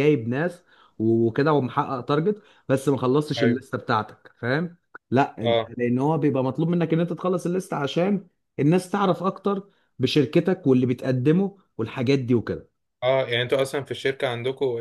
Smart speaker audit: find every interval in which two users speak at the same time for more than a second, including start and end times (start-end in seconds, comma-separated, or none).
none